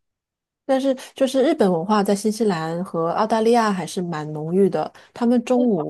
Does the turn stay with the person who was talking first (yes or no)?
yes